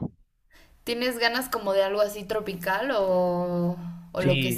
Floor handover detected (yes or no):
yes